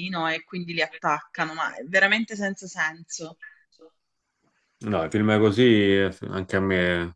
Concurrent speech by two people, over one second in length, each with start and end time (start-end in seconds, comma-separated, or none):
none